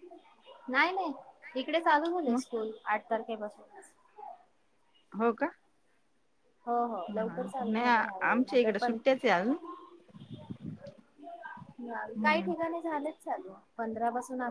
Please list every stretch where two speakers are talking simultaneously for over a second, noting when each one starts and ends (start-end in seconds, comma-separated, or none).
7.1-9.0